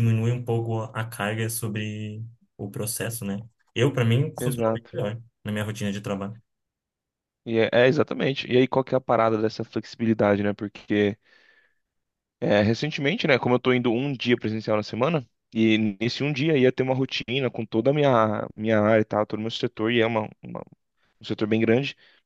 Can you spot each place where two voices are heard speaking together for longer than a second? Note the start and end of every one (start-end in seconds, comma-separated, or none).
none